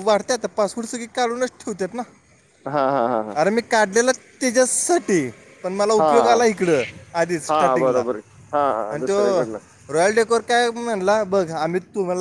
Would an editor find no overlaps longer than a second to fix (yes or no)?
yes